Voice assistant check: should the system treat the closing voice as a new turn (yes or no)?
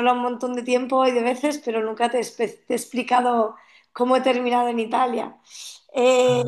no